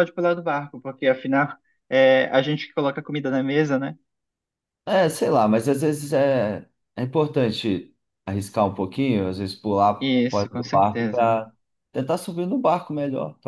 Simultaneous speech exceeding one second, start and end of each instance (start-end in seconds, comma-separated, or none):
10.0-11.3